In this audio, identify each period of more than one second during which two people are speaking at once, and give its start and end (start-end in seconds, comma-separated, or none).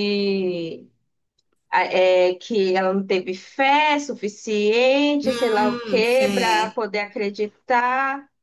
5.2-6.8